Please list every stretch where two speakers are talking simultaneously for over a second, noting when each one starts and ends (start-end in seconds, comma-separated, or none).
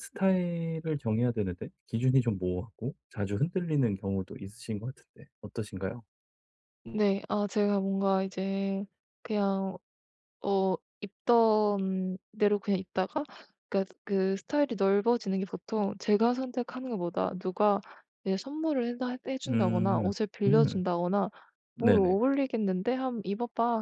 19.5-20.8